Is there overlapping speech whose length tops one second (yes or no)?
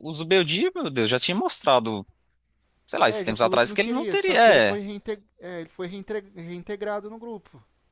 yes